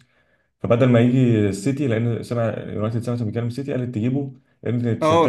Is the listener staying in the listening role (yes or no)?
no